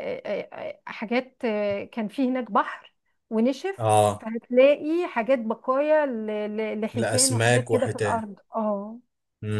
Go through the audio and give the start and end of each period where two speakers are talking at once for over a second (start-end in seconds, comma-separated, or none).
6.9-8.2